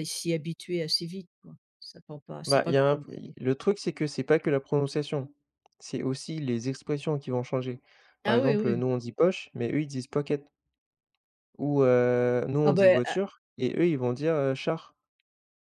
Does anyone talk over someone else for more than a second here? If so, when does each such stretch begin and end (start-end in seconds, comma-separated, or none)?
none